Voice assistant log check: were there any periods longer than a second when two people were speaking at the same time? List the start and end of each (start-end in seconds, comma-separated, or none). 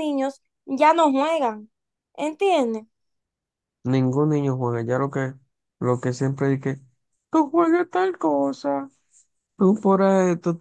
none